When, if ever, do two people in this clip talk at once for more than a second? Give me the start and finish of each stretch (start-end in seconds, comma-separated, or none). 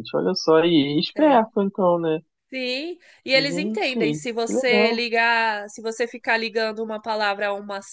3.3-5.0